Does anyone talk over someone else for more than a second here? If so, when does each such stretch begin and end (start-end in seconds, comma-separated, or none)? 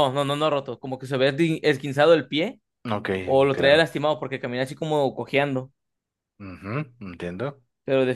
none